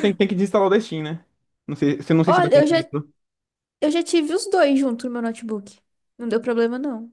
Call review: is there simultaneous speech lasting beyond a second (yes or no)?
no